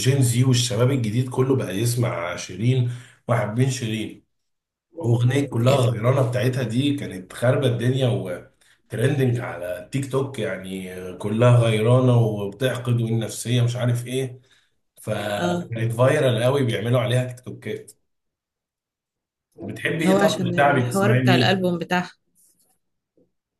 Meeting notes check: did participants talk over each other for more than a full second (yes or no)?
yes